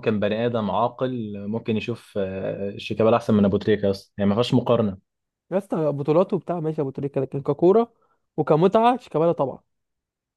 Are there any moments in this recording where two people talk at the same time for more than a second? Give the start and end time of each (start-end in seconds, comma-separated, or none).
none